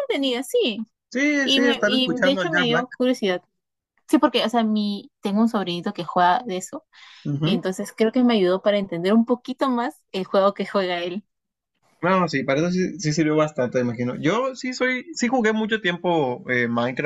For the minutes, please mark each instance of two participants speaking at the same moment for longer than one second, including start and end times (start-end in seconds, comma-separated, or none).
1.4-2.9